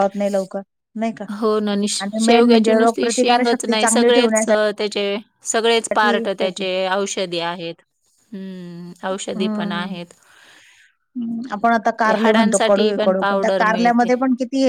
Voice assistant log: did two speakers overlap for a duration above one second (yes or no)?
yes